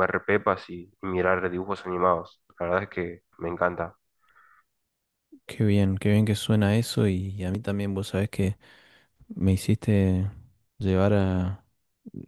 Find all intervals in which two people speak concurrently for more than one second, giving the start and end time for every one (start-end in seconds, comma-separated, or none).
none